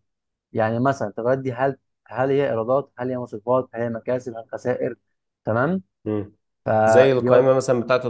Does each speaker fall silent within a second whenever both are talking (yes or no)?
yes